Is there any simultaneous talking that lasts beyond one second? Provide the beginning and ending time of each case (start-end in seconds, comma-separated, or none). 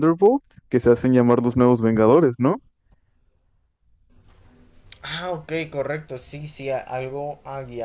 none